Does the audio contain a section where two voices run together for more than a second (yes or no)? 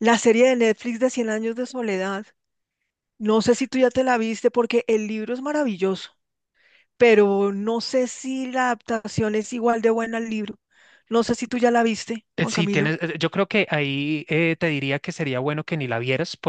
no